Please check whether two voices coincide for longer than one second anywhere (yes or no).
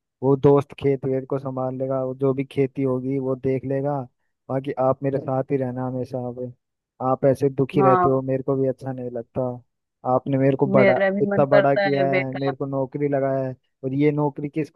yes